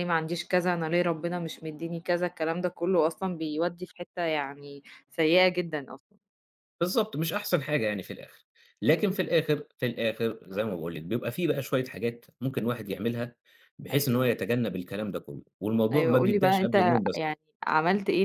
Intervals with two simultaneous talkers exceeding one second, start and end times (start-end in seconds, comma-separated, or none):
15.9-17.4